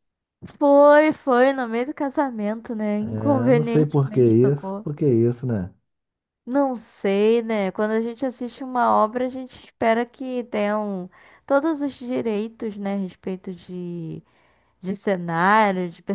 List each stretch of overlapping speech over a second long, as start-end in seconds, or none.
3.0-4.9